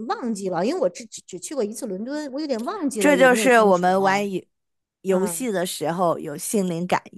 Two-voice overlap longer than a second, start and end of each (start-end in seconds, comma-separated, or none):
3.0-4.2